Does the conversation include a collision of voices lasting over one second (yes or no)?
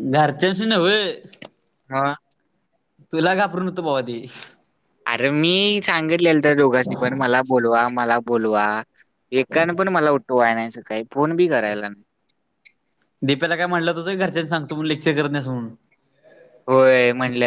no